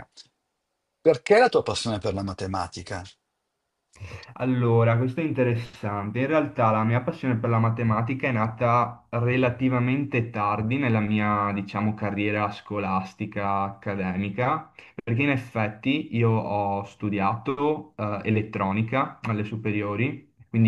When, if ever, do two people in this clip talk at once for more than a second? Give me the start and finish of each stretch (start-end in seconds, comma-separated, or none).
none